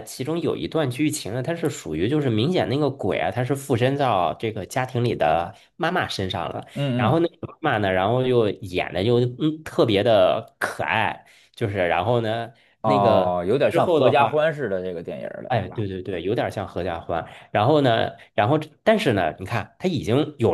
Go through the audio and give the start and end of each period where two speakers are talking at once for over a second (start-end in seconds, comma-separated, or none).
12.8-14.4